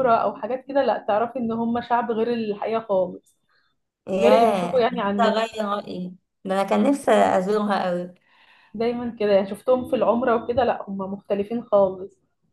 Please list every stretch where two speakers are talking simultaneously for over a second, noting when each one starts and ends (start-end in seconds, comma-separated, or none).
4.2-5.4